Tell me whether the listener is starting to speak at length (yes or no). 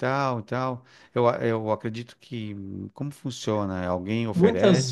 yes